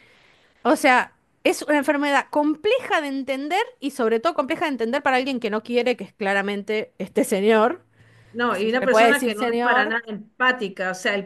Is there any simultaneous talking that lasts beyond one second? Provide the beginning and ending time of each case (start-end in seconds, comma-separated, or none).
8.5-9.9